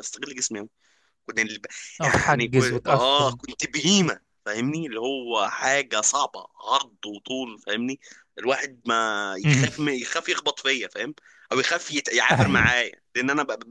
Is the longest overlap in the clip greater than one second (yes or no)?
yes